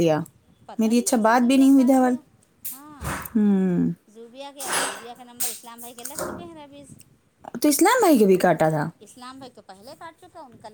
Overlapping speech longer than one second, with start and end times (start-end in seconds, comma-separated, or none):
0.8-2.1